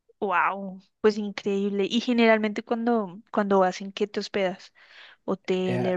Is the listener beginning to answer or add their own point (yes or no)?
yes